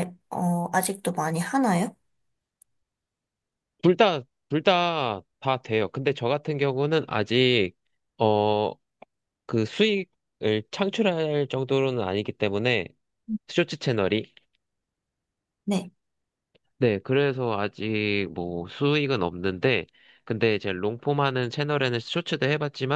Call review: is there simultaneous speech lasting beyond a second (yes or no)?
no